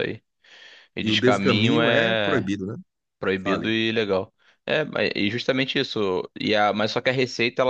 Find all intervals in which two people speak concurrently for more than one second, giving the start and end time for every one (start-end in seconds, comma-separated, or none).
1.0-2.5